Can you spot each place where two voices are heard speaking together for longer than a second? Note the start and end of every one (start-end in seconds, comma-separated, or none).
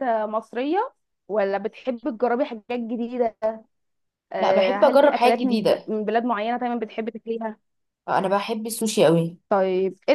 4.4-5.9